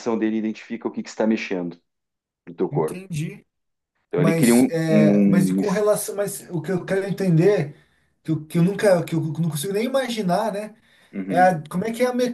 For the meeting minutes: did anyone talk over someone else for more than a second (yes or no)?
yes